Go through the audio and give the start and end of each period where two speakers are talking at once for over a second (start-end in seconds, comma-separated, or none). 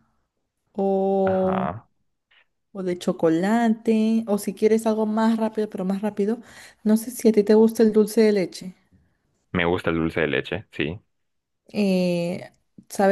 none